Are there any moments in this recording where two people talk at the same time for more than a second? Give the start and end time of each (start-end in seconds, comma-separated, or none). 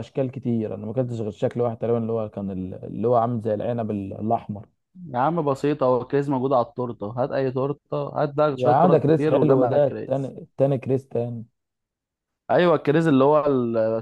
8.6-10.3